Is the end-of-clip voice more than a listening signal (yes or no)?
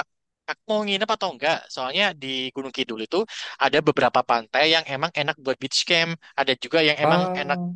no